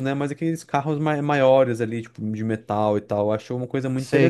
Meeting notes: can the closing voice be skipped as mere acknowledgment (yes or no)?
no